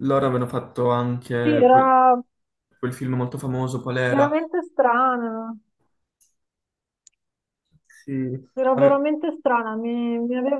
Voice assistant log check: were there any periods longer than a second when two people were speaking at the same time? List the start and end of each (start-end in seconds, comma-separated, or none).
none